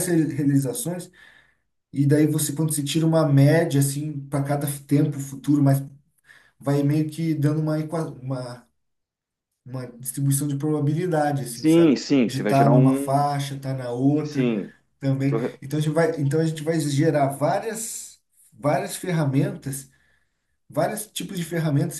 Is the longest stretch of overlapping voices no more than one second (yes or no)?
no